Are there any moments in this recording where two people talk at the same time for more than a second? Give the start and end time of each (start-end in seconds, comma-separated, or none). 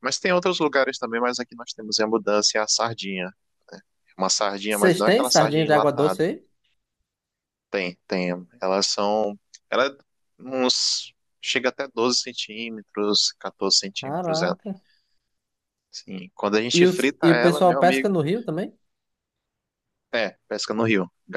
4.7-6.2, 16.7-18.1